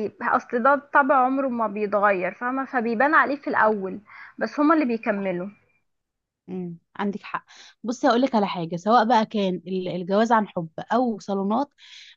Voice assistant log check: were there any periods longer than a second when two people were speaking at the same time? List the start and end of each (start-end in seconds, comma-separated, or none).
none